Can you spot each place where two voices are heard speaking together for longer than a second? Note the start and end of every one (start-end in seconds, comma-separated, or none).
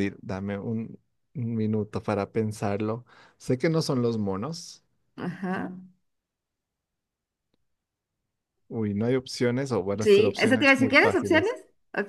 10.0-11.5